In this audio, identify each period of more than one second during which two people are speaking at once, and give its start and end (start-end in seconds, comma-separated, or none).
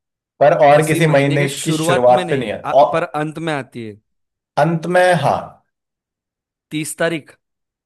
0.7-2.9